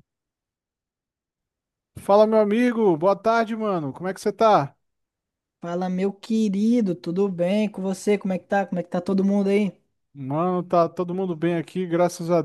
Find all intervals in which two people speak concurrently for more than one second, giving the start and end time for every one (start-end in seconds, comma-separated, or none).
none